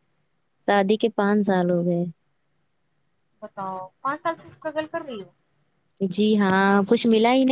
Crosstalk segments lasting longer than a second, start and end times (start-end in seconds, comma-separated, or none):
none